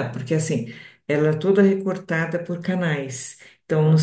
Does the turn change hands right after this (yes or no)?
no